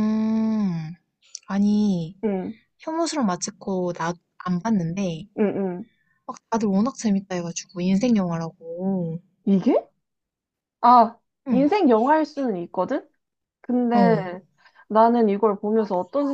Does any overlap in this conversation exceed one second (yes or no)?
no